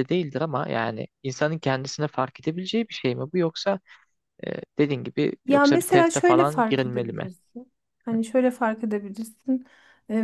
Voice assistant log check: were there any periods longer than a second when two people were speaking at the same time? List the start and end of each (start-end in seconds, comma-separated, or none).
5.5-7.3